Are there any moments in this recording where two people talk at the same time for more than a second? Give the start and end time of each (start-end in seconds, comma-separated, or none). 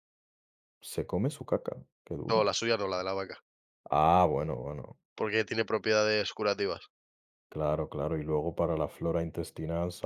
none